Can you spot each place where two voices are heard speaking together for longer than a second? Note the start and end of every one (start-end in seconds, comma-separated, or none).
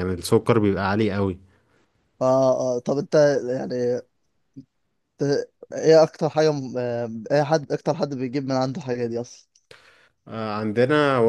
none